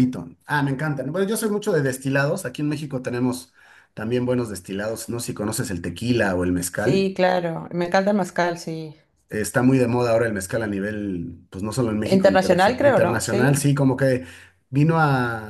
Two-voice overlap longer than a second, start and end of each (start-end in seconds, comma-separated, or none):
12.0-13.7